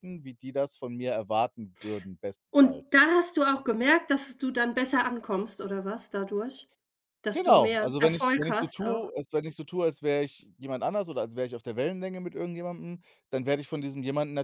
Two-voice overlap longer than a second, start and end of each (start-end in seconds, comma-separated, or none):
7.3-9.1